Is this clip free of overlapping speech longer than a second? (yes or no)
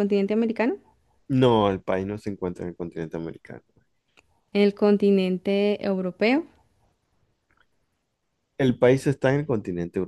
yes